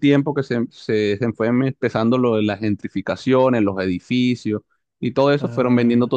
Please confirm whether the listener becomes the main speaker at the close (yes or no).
no